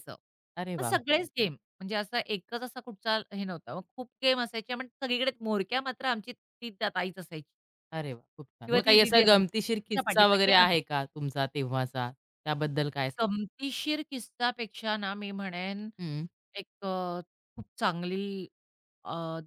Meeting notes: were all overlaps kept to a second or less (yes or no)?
no